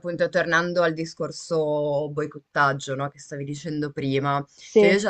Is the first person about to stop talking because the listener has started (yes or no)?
no